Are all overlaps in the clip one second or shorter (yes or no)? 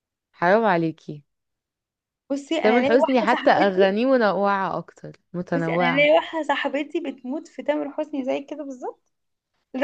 no